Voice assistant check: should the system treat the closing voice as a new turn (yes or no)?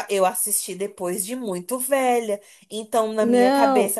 no